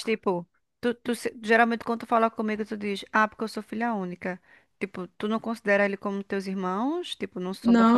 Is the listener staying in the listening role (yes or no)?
no